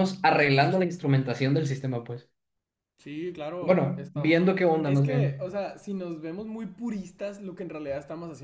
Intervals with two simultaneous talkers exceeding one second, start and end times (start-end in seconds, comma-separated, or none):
3.6-5.4